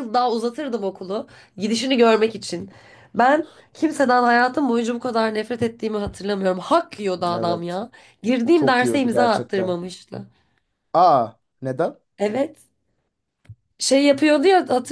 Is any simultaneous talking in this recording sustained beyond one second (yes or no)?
yes